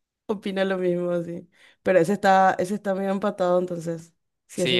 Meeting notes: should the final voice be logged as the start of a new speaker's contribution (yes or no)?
yes